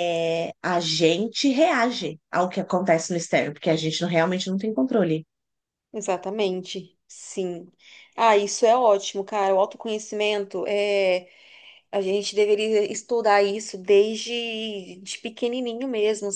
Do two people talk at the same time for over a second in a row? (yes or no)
no